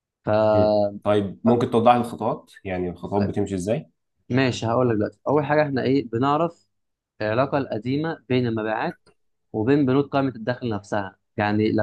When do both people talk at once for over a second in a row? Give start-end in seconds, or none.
none